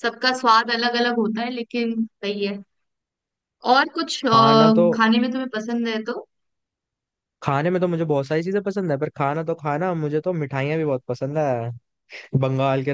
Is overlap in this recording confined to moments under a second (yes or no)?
yes